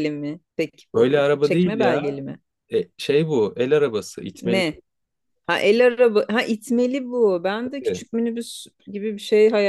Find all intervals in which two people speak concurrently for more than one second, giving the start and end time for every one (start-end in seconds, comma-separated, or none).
0.9-2.2